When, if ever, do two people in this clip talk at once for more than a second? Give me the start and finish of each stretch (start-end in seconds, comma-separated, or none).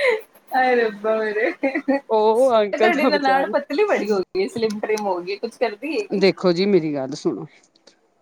2.2-3.7